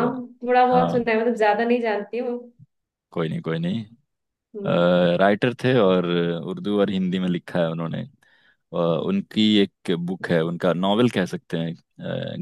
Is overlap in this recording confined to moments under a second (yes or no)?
yes